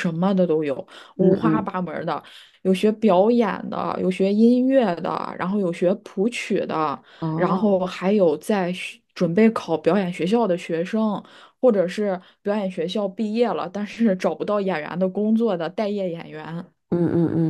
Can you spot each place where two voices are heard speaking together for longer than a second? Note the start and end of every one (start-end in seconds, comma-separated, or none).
none